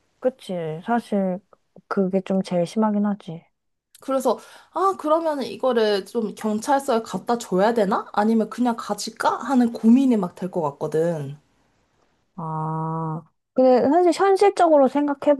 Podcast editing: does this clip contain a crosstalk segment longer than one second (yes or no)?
no